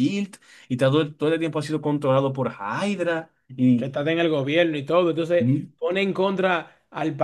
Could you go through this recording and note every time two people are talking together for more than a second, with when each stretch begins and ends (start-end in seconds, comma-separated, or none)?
none